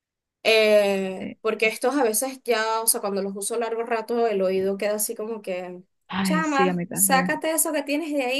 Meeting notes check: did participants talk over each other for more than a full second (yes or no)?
yes